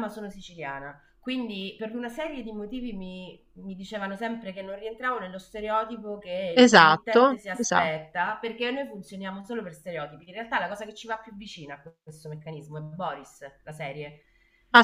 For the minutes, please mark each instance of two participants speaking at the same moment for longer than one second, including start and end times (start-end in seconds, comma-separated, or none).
6.5-8.1